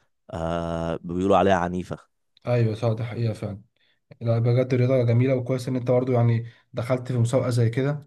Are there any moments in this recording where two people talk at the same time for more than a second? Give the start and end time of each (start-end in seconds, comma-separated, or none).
none